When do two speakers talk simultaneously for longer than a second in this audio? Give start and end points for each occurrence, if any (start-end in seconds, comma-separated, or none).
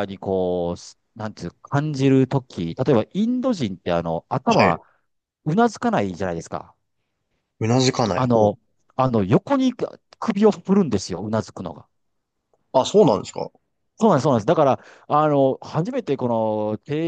none